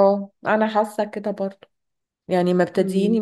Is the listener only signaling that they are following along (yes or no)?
yes